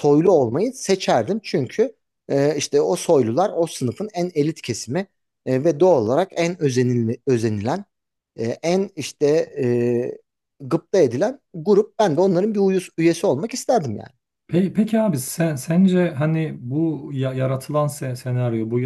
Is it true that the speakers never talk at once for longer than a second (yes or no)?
yes